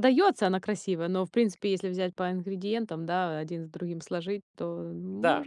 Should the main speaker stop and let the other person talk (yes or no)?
yes